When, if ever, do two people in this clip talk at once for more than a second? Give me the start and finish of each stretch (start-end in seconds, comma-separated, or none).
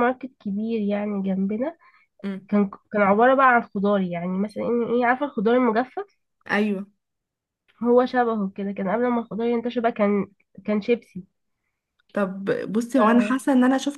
none